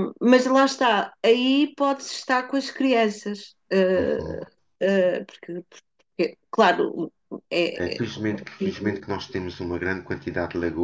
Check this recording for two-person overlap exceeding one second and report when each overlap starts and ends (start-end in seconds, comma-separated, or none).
none